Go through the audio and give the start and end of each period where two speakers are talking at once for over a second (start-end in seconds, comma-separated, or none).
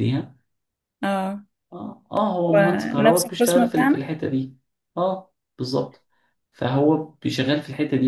2.5-4.1